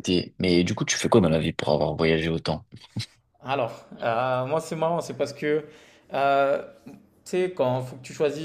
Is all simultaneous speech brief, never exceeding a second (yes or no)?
yes